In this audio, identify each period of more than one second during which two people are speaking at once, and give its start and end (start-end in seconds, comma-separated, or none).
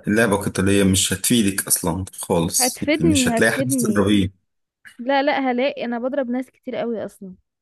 2.6-4.1